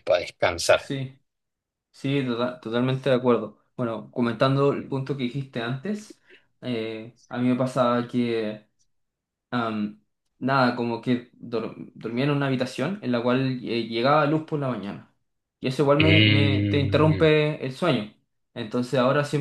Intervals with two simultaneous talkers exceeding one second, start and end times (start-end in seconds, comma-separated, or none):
16.0-17.3